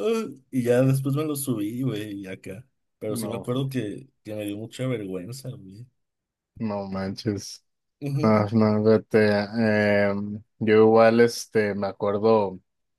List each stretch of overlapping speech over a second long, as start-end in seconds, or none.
none